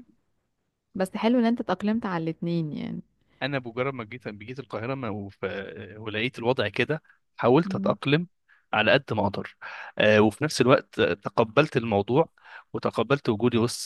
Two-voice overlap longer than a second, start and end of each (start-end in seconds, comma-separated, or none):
none